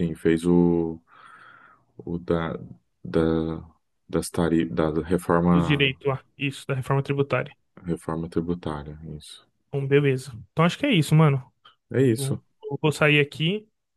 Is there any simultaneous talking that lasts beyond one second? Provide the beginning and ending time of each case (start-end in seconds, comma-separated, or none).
none